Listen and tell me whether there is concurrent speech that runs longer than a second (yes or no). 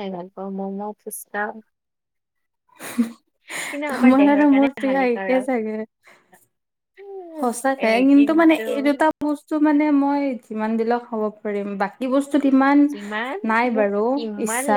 yes